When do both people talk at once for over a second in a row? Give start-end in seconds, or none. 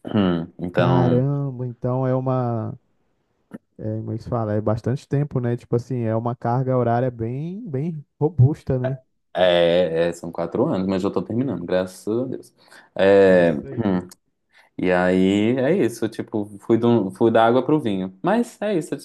none